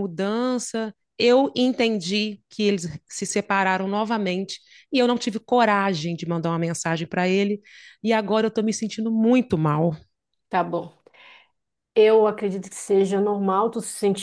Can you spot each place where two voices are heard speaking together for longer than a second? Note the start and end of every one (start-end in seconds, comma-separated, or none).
none